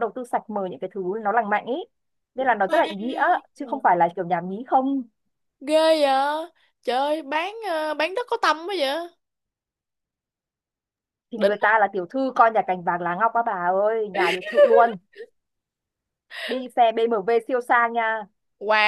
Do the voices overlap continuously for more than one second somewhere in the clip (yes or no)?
yes